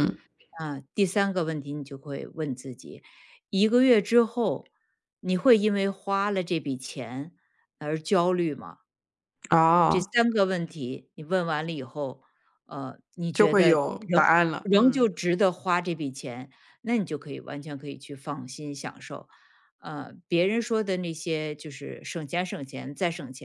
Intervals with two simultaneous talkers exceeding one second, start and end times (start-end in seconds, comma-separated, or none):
13.3-15.1